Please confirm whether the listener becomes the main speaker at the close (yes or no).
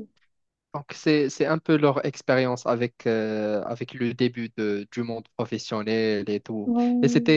no